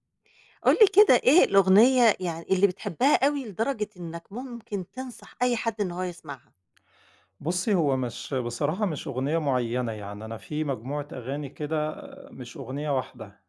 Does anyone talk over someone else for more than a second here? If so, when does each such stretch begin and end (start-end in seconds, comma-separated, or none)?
none